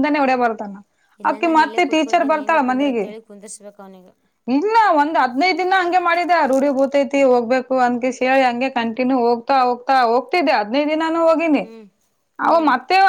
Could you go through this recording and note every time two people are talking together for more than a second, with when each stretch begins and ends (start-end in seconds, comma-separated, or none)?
1.3-3.0